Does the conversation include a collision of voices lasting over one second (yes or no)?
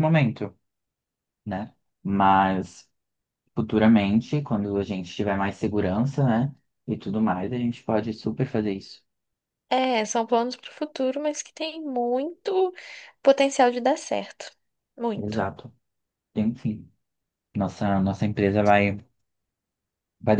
no